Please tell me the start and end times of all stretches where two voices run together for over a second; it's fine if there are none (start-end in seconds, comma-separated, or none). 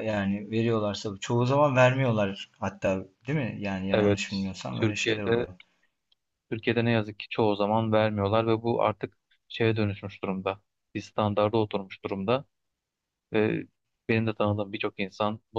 3.9-5.5